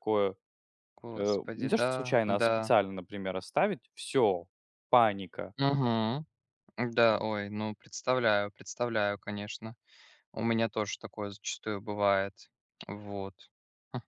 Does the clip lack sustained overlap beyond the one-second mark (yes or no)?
no